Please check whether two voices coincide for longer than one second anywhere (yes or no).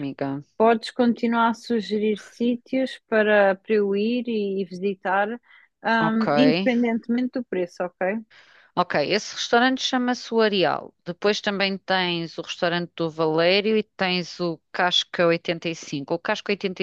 no